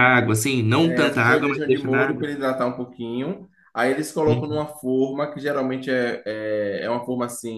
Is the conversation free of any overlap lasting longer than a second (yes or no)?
no